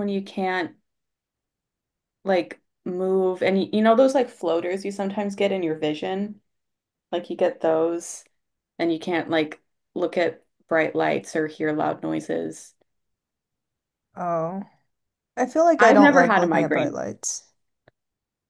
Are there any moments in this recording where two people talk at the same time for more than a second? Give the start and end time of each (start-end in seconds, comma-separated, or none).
15.8-17.0